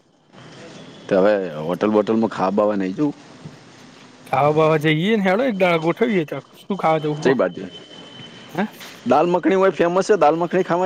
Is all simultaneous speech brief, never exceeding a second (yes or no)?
yes